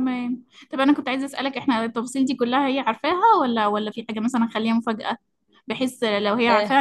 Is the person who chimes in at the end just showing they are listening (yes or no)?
yes